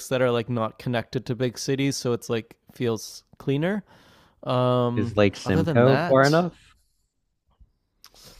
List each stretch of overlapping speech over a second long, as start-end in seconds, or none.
5.0-6.4